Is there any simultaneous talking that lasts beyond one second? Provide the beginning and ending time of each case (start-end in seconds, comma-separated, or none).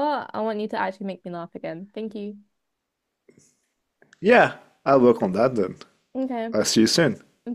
none